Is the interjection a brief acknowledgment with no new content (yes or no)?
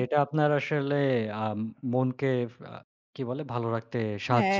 no